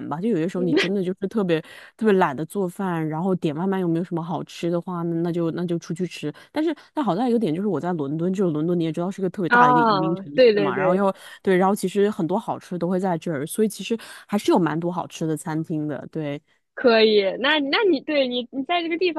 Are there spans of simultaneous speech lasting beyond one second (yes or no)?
yes